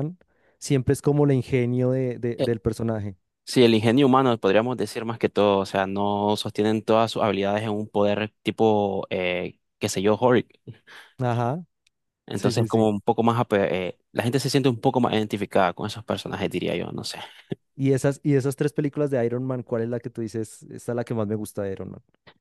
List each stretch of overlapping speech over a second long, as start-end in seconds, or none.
none